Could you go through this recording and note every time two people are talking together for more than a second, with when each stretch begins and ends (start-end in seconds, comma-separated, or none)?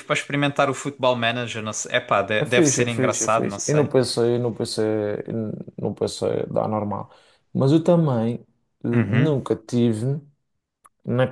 2.4-3.9